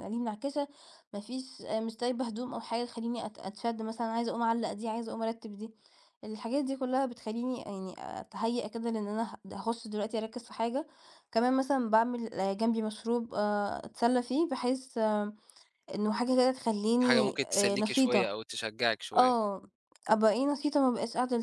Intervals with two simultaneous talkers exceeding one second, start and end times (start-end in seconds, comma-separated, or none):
17.0-18.3